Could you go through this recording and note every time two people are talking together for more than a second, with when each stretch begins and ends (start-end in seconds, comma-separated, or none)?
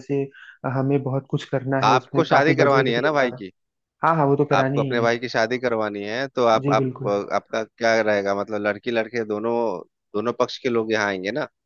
1.9-3.4